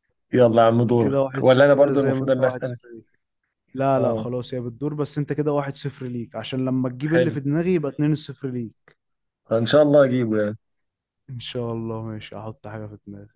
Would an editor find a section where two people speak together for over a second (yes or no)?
yes